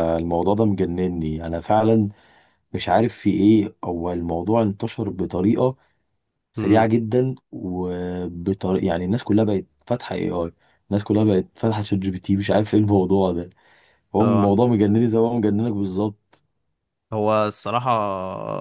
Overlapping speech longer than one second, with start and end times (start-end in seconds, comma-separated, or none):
none